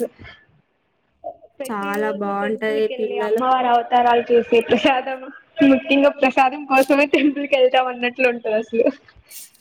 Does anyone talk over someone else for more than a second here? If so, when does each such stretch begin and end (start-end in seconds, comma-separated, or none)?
1.7-3.4